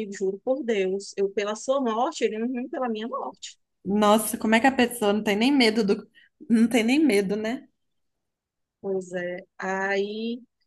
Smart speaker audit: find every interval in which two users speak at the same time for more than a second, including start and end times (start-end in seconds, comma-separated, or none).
none